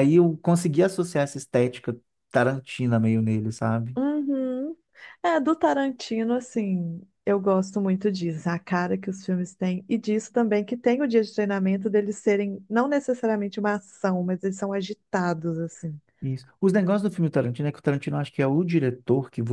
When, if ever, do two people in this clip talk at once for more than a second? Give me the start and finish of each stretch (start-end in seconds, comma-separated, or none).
none